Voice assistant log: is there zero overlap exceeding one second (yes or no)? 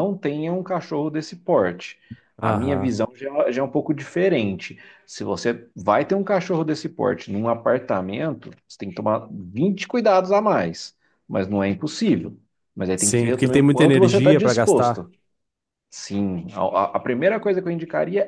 no